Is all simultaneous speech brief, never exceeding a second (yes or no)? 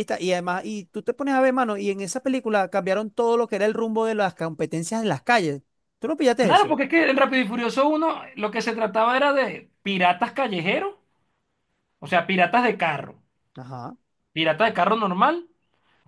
yes